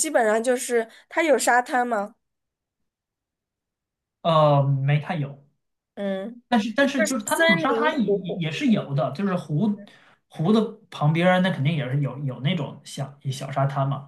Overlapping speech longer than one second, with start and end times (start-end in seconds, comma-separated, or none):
6.8-8.4